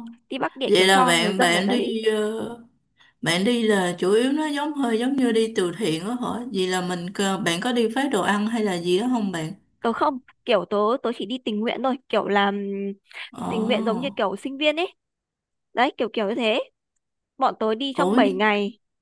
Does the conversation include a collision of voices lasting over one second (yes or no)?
yes